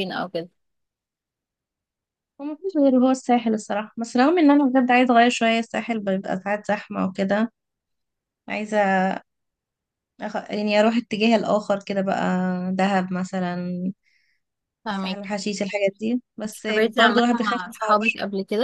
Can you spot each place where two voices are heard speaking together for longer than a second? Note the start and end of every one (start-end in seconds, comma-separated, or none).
16.5-18.0